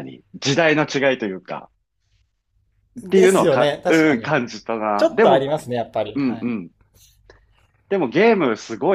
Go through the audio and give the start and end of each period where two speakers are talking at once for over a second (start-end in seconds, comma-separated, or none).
3.0-4.3